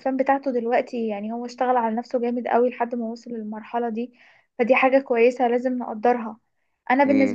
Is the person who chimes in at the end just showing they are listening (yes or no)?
yes